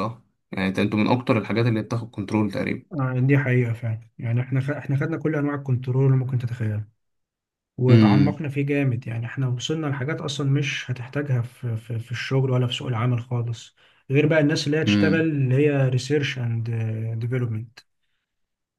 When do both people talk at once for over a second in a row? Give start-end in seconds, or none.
none